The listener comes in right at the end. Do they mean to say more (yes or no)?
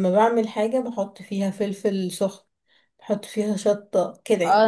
yes